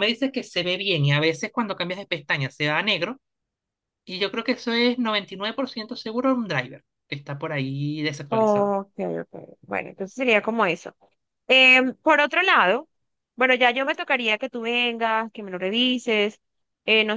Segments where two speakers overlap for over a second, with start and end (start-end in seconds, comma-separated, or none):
none